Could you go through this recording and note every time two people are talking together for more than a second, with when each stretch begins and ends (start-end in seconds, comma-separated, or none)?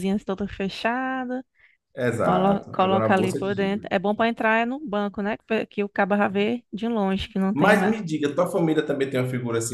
2.2-3.9